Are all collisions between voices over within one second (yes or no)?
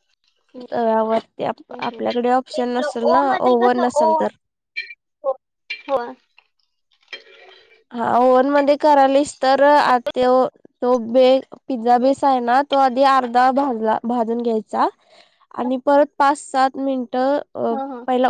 no